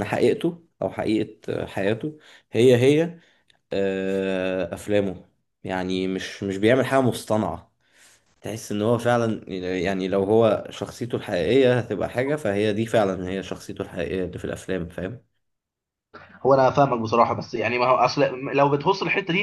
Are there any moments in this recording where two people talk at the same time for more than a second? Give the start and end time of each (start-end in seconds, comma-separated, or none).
none